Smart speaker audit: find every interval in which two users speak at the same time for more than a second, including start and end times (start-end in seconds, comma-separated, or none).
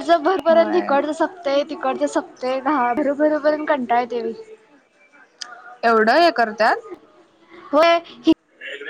none